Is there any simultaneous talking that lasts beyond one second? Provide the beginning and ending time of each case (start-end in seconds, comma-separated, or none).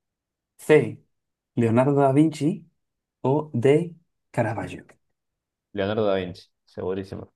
none